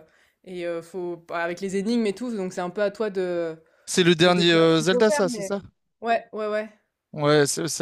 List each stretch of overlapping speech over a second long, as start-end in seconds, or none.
4.2-5.6